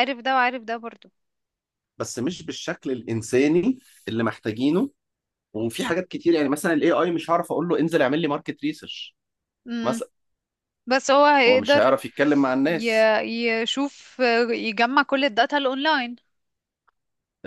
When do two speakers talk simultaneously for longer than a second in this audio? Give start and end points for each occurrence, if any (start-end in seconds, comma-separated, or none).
none